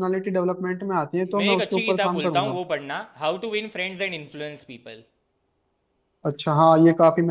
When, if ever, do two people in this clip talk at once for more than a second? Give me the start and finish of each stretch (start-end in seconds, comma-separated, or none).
1.4-2.6